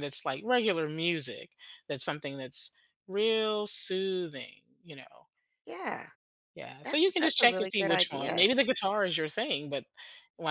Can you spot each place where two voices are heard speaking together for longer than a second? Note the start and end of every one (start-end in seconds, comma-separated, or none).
6.8-8.5